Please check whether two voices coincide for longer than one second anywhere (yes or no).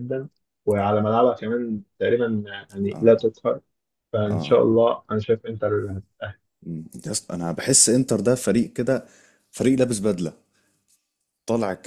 no